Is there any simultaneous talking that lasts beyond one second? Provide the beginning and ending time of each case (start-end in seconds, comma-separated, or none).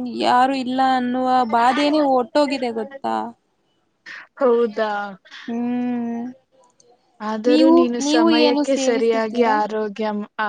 7.5-9.6